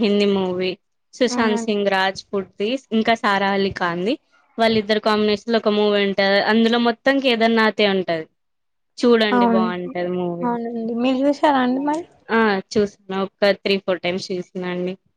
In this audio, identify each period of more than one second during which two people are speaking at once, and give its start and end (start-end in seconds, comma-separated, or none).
none